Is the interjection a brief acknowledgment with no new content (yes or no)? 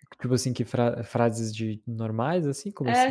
no